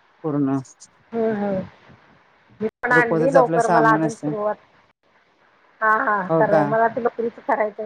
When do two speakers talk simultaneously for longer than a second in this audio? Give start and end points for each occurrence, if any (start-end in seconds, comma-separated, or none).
2.9-4.3